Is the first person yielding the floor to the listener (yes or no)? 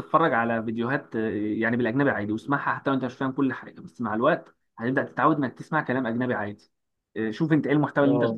no